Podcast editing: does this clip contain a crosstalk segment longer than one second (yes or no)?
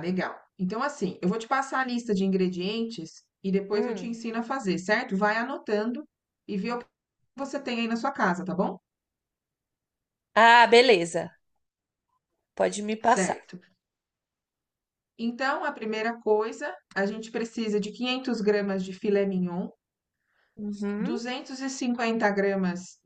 no